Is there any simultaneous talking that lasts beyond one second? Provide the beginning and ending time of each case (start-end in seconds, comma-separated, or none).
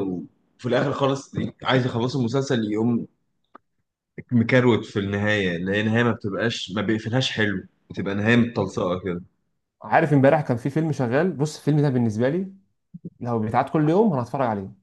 none